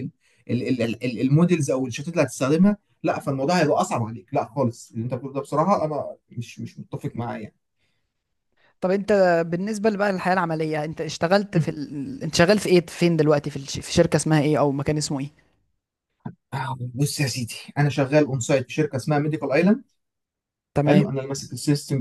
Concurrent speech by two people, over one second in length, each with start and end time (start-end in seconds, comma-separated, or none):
none